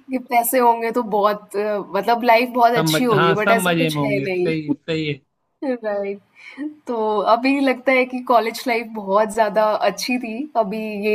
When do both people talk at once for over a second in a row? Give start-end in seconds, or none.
2.8-4.8